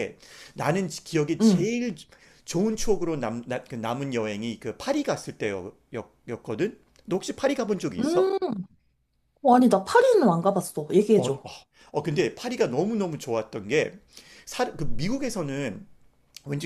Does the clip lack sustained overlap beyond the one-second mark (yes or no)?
yes